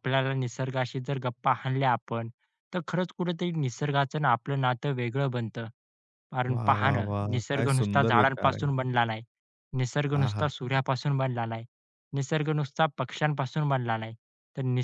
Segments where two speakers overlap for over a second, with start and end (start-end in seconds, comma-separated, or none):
6.5-8.7